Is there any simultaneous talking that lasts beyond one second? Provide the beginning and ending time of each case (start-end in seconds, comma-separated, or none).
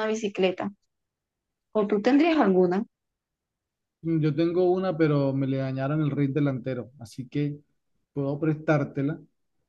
none